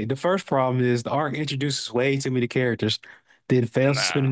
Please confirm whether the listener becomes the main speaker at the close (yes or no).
no